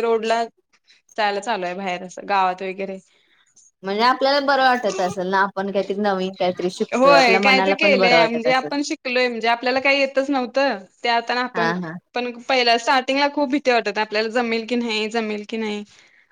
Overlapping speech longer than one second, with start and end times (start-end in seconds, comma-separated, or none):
6.9-8.7